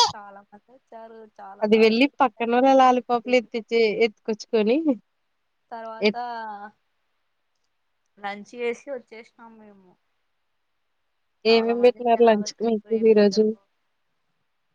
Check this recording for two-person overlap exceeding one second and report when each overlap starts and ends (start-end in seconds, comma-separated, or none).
1.6-3.3, 11.5-13.4